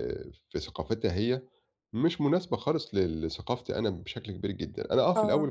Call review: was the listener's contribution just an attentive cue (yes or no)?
yes